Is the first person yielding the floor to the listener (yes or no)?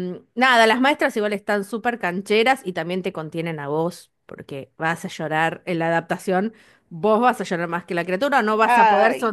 no